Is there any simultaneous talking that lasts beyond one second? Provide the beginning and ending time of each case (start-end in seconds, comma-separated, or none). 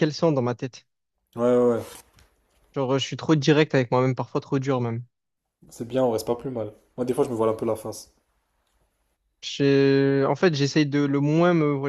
none